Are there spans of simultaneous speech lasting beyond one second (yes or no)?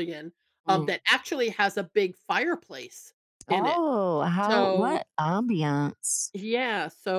no